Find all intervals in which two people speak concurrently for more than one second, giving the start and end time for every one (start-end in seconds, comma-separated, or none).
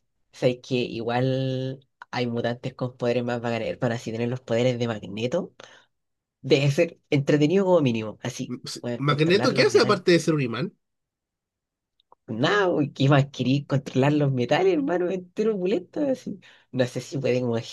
8.6-10.0